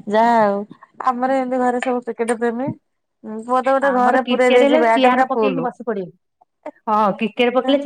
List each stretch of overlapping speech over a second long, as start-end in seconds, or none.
3.9-5.7